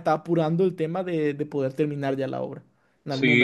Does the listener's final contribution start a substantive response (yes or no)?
yes